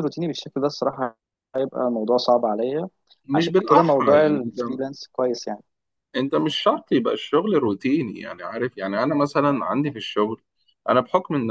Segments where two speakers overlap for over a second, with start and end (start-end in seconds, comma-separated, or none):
3.3-4.6